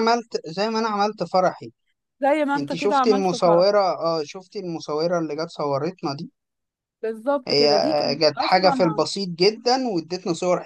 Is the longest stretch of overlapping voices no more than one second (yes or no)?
no